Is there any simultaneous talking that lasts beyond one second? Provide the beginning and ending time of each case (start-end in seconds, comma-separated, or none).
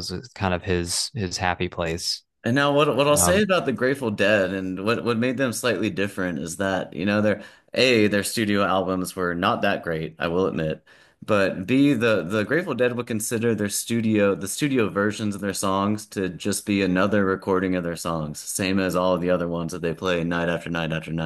none